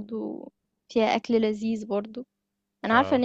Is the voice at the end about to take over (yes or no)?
no